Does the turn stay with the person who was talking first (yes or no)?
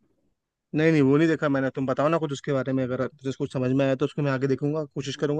no